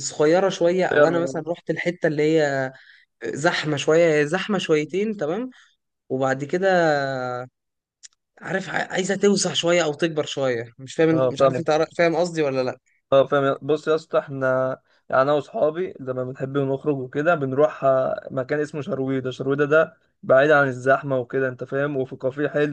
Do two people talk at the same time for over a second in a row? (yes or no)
no